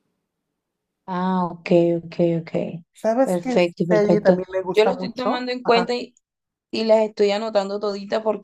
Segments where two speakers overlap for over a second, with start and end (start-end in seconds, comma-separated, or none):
3.2-5.9